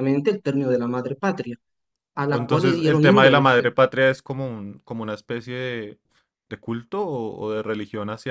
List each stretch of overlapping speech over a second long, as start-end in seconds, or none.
2.3-3.6